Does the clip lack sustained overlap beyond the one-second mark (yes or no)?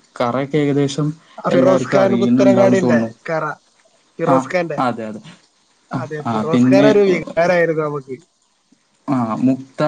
no